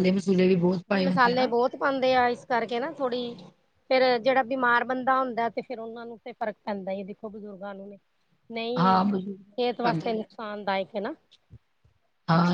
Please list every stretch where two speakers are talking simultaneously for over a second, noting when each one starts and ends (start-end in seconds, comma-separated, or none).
8.8-10.2